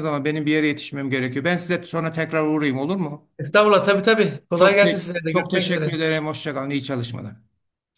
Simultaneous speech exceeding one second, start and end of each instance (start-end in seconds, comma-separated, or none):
4.5-6.0